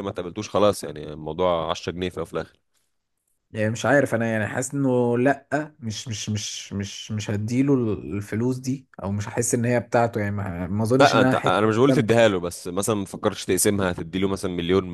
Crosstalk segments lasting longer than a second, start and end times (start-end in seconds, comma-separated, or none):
none